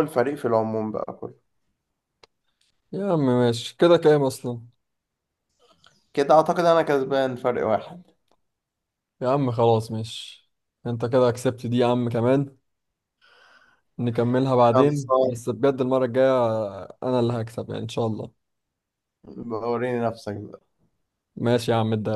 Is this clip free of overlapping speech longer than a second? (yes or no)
yes